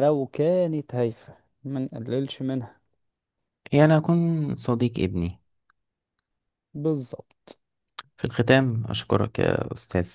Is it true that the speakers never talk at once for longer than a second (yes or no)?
yes